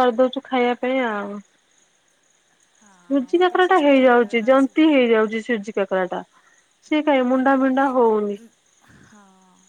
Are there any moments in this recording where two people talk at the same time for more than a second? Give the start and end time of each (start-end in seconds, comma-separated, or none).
3.1-5.0